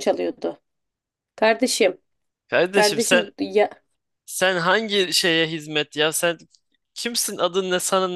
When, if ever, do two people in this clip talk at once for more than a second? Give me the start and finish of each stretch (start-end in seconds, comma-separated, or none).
none